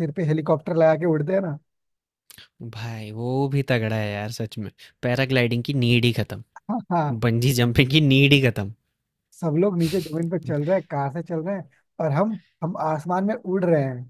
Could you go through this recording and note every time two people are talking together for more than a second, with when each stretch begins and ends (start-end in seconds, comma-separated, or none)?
none